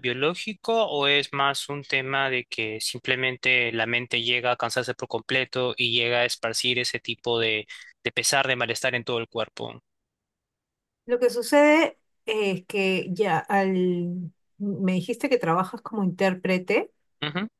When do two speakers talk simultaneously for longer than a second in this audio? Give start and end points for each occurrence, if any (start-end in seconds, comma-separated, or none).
none